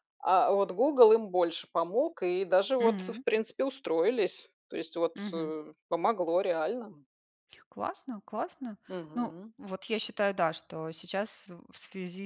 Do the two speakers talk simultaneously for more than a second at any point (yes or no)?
no